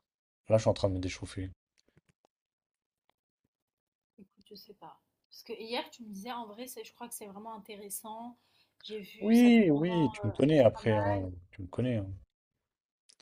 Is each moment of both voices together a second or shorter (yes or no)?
no